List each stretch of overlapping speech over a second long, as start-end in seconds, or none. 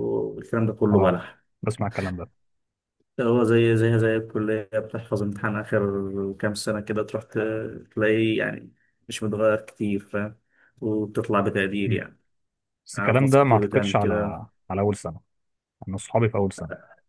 13.0-14.4